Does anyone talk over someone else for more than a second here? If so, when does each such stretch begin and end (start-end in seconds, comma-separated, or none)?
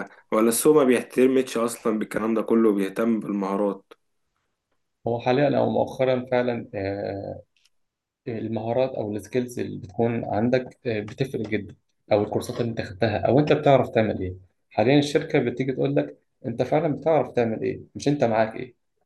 none